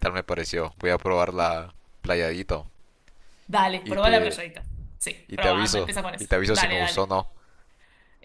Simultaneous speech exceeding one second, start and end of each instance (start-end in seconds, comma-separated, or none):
5.3-7.1